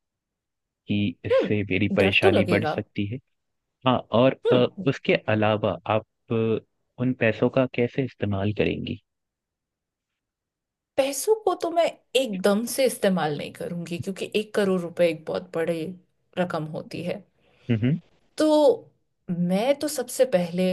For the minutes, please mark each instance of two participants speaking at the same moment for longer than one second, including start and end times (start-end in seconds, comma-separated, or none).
1.3-2.8